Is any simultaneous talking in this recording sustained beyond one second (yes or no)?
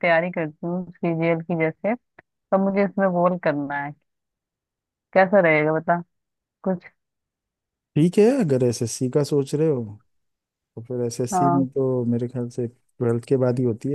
no